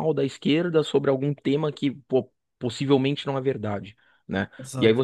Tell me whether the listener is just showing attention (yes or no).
yes